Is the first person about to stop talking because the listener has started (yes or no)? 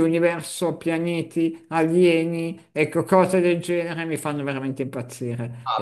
yes